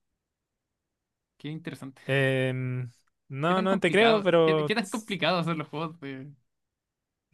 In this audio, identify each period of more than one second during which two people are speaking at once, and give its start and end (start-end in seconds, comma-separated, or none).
3.5-5.2